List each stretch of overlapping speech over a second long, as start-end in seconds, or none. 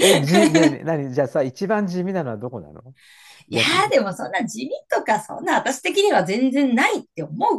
none